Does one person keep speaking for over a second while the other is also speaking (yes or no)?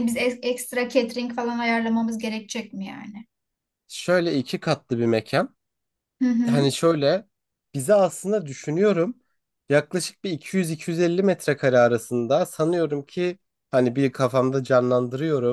no